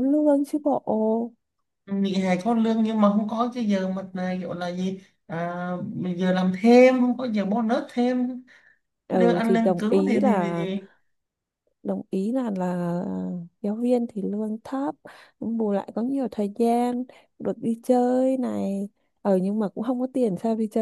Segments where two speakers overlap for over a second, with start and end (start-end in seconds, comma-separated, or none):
9.1-10.7